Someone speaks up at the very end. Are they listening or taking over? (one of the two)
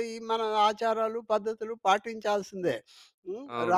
taking over